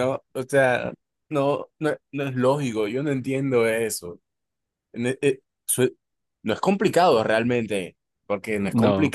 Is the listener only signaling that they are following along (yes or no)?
yes